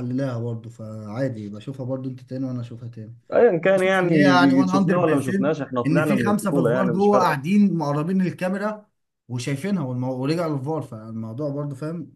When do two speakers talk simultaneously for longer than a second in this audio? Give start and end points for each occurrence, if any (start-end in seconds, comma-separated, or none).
3.8-7.4